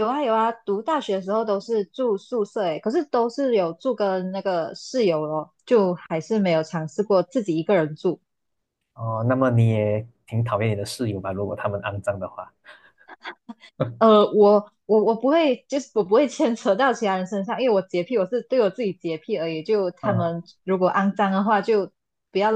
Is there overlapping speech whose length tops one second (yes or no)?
no